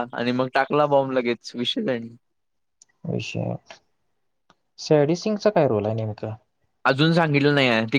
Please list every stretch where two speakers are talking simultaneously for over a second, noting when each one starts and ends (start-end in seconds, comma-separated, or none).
none